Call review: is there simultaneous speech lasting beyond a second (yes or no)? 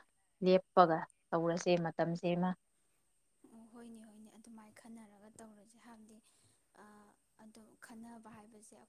no